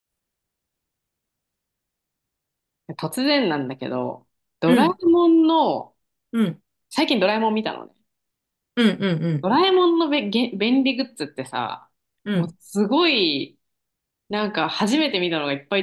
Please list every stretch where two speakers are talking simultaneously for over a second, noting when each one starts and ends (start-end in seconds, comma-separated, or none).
none